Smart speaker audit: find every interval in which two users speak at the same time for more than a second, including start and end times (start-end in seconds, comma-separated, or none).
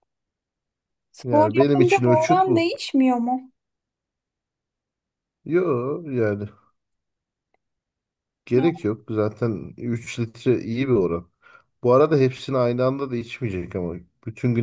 1.2-2.7